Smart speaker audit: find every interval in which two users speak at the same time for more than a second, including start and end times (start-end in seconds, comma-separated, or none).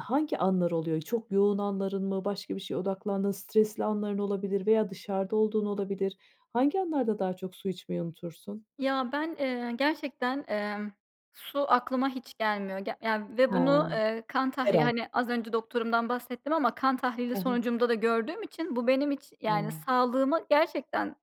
none